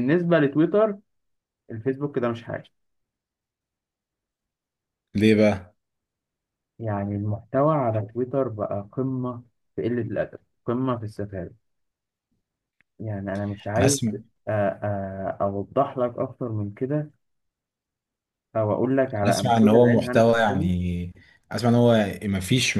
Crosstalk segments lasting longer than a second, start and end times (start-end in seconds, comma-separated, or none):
19.2-20.7